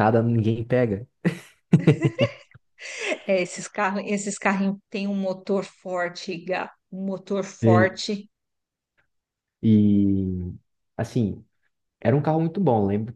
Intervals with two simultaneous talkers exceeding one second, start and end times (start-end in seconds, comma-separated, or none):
none